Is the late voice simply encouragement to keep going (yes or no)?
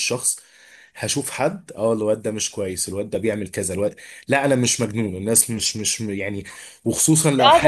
no